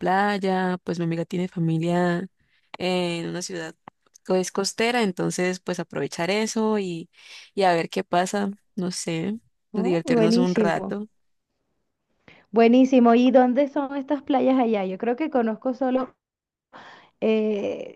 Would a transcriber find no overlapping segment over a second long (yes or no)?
no